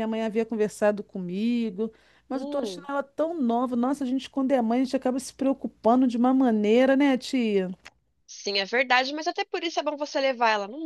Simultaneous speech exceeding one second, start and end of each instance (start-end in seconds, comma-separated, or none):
none